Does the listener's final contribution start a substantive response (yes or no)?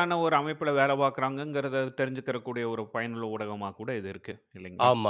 yes